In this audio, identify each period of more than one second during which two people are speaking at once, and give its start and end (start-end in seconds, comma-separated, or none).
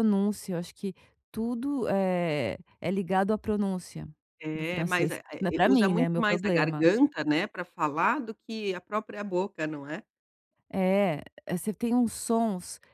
4.5-6.8